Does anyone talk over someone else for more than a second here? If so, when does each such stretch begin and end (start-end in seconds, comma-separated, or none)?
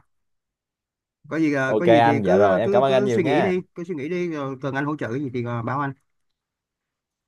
1.6-3.5